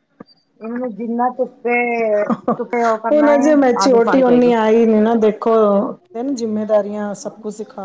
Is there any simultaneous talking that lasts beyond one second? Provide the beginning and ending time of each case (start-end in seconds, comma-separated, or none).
2.7-4.5